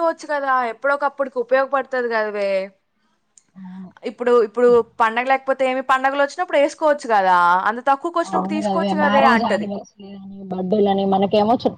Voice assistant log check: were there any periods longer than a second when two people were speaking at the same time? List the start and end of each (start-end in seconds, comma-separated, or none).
none